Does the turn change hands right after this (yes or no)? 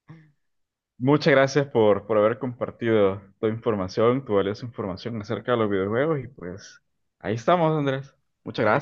yes